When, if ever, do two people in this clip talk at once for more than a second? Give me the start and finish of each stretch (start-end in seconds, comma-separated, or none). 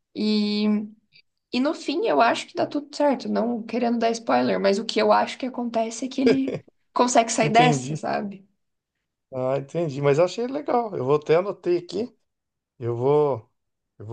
none